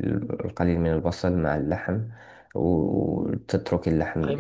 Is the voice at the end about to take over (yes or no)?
yes